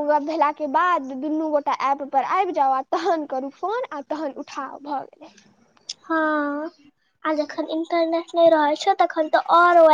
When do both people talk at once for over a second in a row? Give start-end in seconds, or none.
none